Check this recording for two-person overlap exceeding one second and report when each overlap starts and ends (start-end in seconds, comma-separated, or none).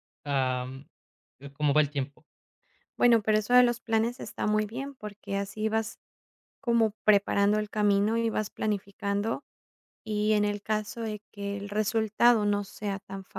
none